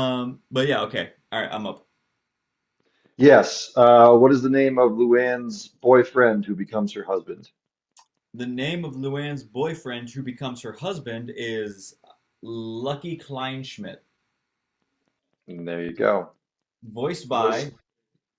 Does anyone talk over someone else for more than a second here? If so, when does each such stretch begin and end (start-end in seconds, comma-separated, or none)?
none